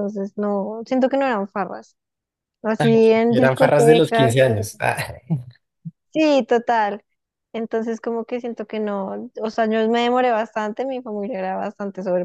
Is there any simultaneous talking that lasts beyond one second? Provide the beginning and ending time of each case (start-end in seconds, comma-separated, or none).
2.8-4.5